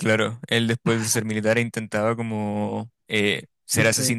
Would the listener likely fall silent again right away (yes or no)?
yes